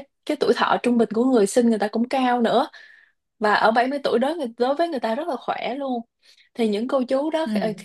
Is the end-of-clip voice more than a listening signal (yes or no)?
no